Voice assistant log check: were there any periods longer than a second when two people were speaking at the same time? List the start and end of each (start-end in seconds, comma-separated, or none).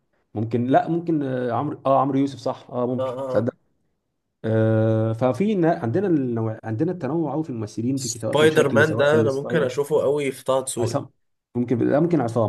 8.0-9.7